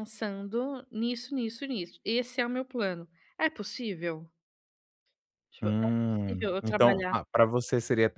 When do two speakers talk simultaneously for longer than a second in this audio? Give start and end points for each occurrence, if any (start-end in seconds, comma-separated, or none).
5.6-7.2